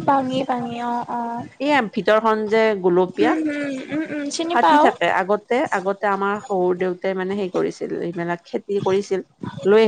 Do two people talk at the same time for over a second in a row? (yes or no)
no